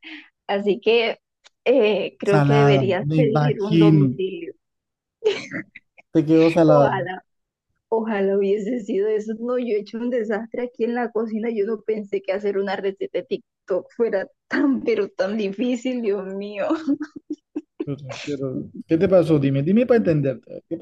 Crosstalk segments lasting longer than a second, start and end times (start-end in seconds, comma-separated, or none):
2.2-4.2